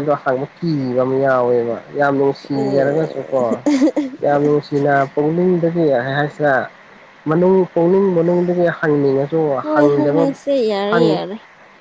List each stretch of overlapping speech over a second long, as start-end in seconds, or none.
none